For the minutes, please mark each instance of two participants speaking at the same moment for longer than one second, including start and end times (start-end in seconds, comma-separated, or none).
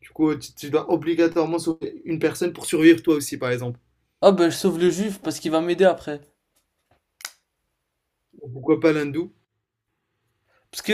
none